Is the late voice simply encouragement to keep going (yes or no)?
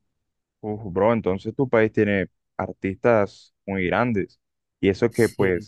yes